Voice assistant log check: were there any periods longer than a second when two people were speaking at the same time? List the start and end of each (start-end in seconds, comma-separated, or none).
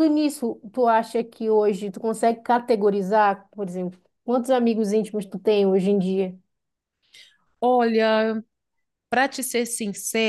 none